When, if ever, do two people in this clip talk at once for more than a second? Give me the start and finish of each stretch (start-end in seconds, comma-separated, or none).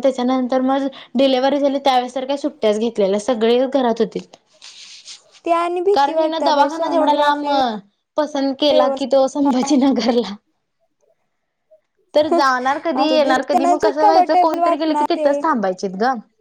5.9-7.5, 13.0-15.3